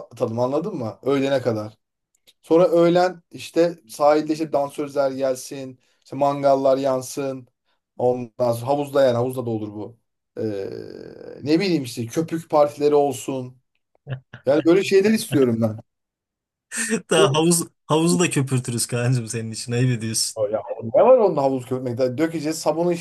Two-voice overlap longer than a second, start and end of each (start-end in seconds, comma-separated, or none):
none